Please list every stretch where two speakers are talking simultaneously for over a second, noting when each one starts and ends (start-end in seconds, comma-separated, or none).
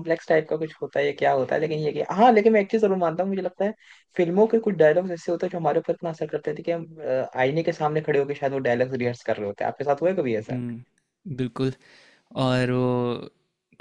none